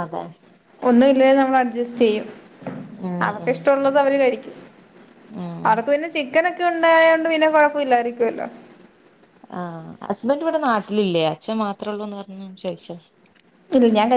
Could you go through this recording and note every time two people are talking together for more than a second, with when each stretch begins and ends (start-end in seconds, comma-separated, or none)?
none